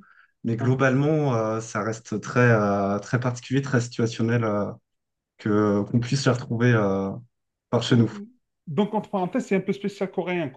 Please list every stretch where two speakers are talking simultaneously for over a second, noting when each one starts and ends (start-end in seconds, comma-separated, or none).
none